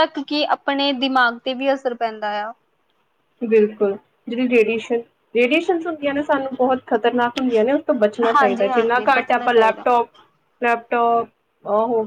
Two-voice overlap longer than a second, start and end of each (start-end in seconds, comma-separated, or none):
8.3-9.9